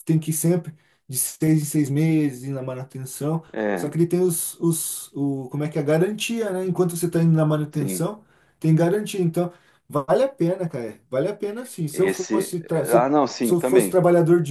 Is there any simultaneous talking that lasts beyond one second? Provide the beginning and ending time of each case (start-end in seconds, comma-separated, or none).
11.9-14.0